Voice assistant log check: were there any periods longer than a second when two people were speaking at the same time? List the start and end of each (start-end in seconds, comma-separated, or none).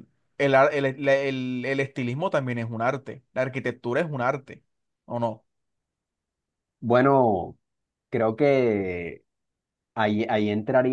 none